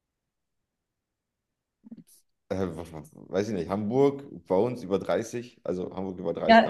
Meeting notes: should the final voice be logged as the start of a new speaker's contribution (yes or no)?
yes